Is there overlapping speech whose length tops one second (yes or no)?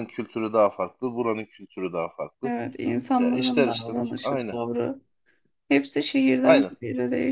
yes